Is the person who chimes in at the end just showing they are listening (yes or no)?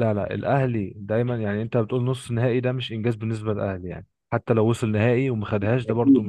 no